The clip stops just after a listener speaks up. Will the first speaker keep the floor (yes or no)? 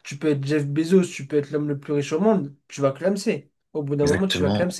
no